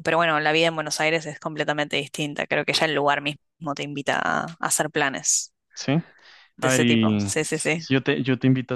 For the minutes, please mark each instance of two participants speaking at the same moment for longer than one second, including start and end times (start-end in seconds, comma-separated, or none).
6.6-7.9